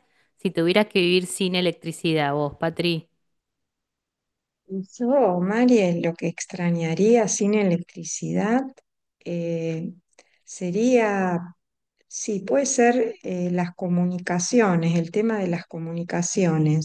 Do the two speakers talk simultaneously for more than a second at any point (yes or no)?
no